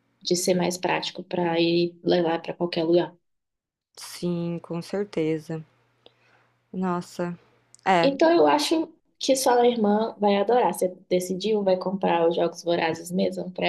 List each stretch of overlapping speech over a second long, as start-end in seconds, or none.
none